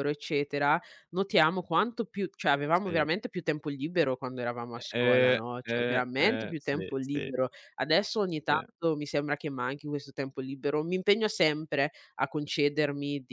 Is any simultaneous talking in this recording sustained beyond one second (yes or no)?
yes